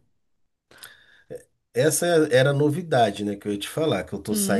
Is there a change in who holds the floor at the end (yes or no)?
yes